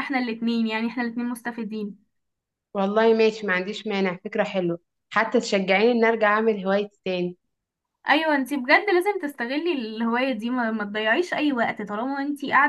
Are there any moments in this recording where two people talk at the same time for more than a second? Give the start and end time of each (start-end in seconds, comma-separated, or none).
none